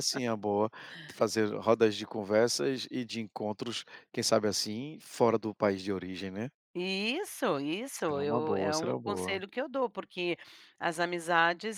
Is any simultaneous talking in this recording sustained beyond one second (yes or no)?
yes